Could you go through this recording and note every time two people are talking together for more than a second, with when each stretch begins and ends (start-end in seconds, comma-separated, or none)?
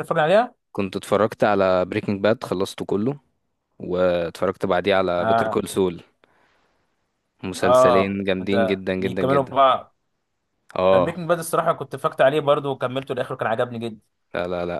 7.6-9.6